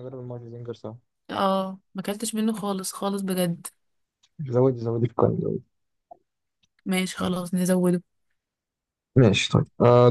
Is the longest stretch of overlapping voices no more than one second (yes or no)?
yes